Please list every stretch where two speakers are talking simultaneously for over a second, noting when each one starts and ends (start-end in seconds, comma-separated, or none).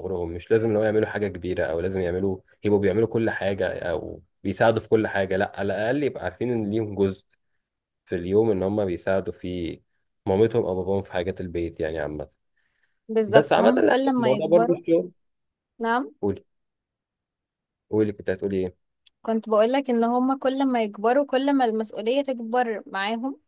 13.3-14.8